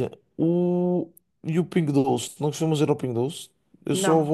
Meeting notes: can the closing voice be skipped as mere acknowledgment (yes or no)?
yes